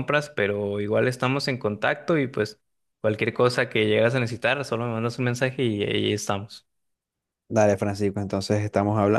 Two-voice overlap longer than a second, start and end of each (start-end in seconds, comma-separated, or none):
none